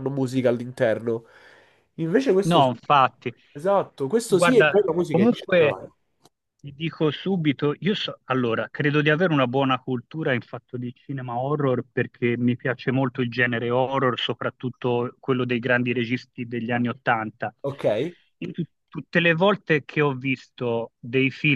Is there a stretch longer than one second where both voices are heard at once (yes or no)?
yes